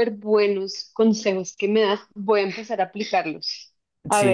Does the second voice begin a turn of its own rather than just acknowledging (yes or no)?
no